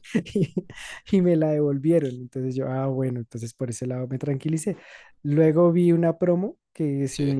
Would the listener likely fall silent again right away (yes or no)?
yes